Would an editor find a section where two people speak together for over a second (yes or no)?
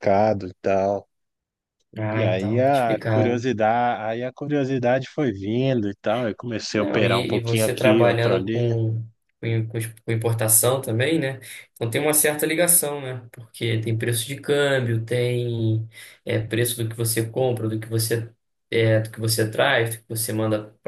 yes